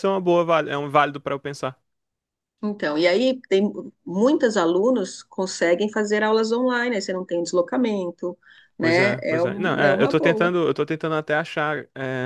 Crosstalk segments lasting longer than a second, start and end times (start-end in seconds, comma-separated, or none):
8.8-10.6